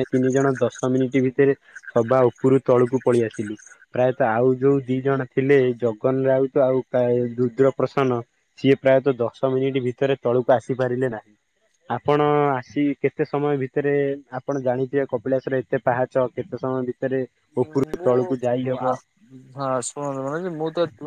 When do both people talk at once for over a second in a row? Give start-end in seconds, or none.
17.7-18.9